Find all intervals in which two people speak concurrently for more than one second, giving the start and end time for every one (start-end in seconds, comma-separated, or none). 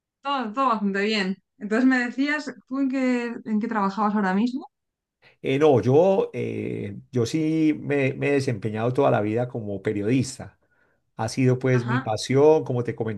none